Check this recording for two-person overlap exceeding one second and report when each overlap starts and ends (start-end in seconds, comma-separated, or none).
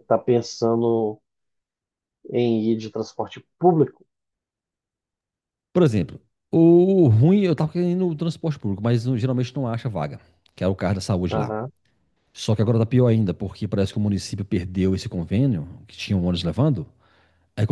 none